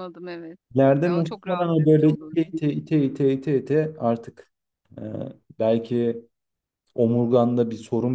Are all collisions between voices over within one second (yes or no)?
no